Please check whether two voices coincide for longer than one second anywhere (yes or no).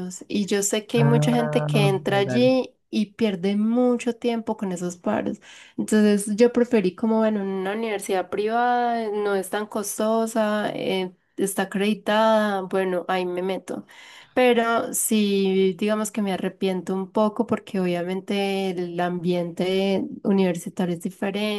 yes